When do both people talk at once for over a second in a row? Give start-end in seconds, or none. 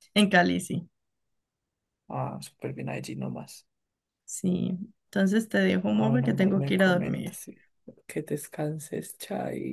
5.9-7.4